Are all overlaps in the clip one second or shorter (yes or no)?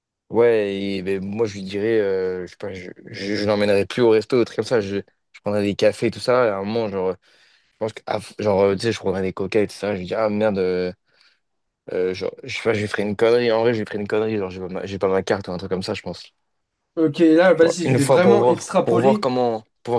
no